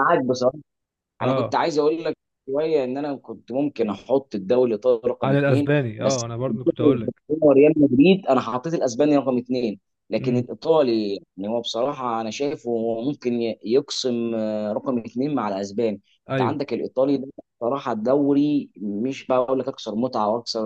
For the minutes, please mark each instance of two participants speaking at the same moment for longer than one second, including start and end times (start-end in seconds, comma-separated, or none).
5.2-6.8